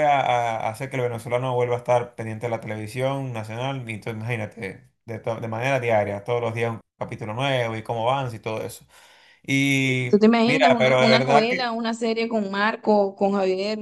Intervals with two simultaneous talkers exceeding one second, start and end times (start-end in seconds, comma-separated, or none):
10.1-11.8